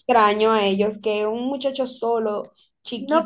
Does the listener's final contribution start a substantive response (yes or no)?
yes